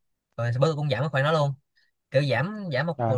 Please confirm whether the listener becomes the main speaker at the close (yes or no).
no